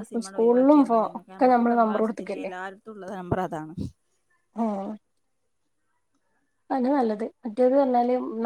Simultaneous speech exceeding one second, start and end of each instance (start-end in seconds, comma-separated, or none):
0.9-2.5